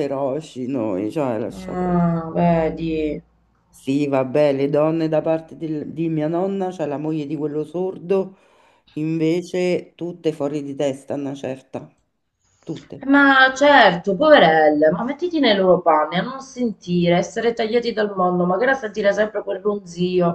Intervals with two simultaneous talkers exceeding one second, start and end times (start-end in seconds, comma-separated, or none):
none